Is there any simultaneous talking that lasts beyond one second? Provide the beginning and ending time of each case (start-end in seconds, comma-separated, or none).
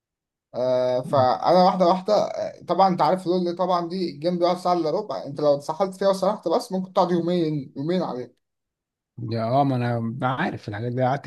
none